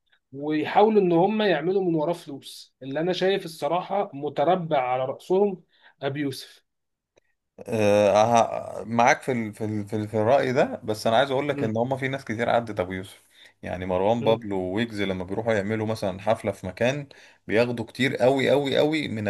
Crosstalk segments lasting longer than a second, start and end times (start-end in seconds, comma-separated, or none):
none